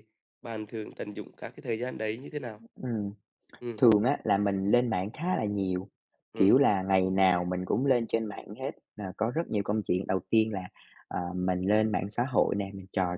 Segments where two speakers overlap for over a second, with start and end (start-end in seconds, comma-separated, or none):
none